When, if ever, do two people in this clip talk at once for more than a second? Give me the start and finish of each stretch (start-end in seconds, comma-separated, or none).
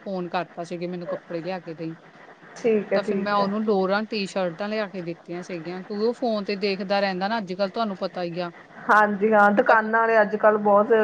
none